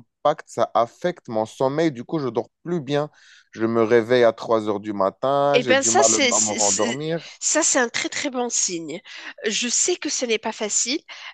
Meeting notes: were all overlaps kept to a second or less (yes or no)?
no